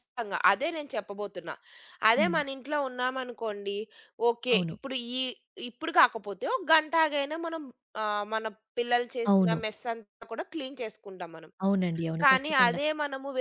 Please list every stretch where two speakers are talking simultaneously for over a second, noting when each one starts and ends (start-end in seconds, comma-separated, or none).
none